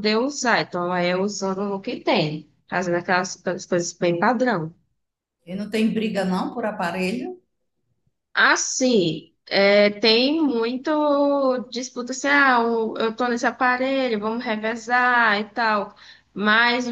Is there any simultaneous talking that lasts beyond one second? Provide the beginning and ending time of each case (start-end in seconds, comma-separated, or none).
none